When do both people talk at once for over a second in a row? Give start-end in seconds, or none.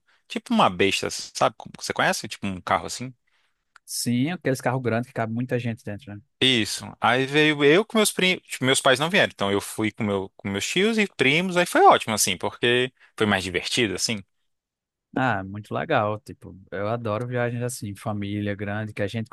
none